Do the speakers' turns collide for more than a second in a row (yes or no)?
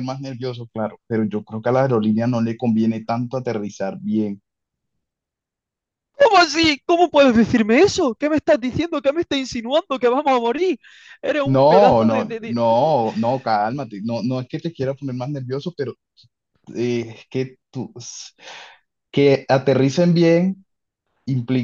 yes